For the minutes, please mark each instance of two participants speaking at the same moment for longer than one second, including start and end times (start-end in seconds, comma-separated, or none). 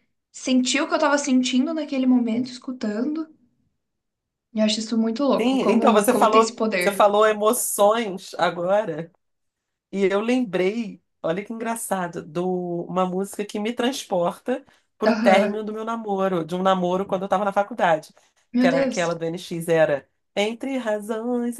5.4-7.1